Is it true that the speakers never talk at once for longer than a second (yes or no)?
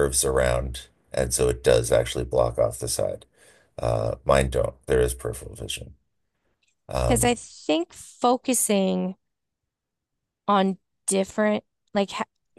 yes